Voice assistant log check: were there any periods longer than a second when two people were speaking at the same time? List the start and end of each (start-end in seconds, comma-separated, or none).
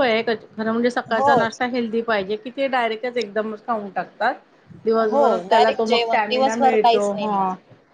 5.0-7.3